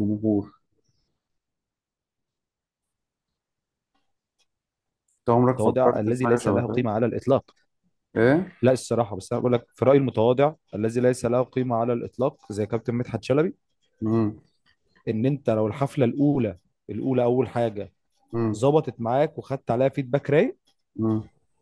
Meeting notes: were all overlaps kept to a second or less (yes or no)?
no